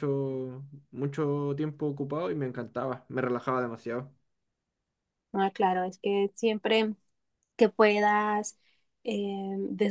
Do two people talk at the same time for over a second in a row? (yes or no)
no